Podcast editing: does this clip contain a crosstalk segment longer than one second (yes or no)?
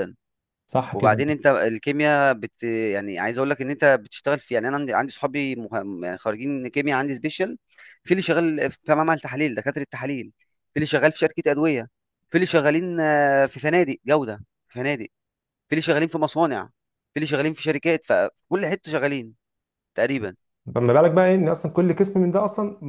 no